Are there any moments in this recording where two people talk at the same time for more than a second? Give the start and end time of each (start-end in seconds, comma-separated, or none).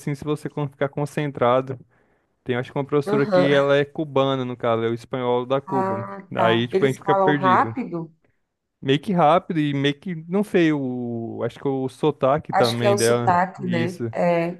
5.7-7.8, 12.5-14.1